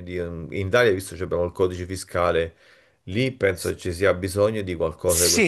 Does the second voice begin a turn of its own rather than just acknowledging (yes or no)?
yes